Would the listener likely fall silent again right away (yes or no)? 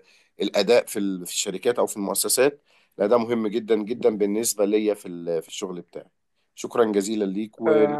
no